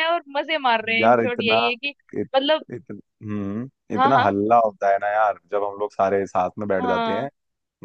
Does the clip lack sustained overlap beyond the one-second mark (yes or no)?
yes